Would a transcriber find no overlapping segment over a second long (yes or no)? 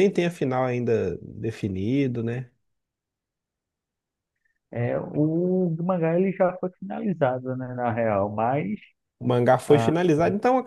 yes